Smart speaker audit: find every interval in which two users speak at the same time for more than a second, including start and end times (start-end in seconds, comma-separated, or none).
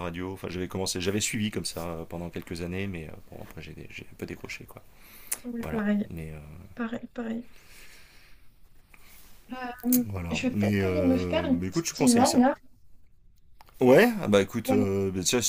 10.1-12.4